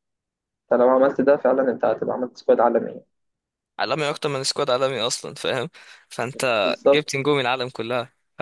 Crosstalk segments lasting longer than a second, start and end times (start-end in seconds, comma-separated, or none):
none